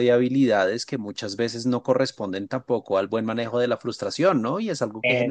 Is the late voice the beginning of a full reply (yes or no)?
no